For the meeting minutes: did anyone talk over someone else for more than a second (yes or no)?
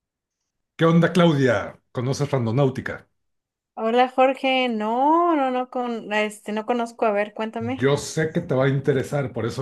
no